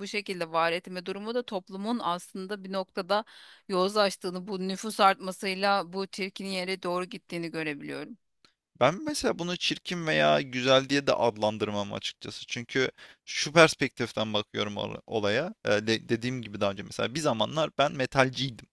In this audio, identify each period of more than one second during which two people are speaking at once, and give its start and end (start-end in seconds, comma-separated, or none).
none